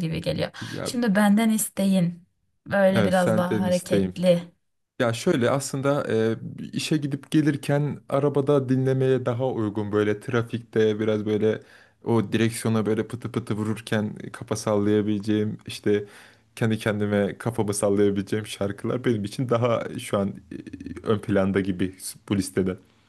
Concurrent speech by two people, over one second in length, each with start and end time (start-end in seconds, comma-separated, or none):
2.9-4.1